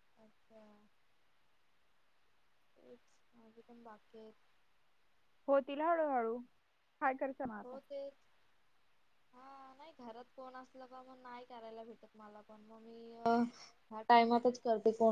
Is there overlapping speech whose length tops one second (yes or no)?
no